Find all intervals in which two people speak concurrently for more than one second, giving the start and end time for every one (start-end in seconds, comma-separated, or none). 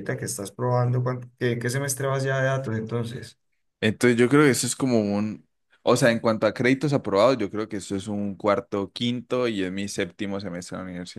none